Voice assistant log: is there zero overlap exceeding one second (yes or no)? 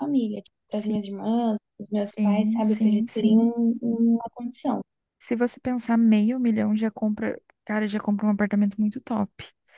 no